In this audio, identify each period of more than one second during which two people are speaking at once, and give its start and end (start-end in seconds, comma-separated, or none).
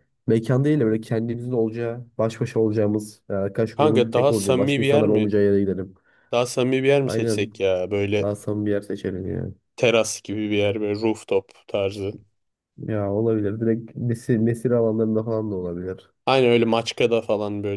3.8-5.3